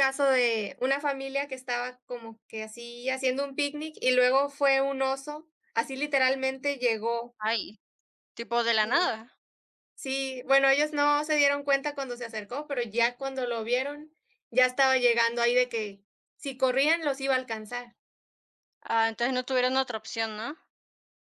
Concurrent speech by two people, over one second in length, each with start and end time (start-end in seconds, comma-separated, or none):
none